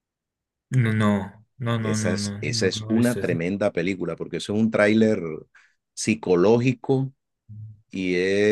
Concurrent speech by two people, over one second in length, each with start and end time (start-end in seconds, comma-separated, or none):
1.8-3.4